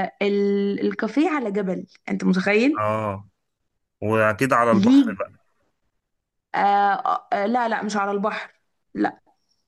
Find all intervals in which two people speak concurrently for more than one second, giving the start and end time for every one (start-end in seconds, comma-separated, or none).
none